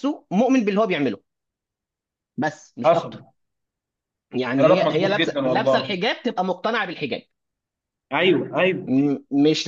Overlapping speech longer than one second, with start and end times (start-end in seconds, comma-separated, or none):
4.6-6.0